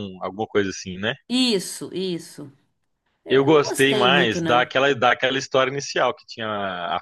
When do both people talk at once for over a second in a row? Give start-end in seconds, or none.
3.3-4.7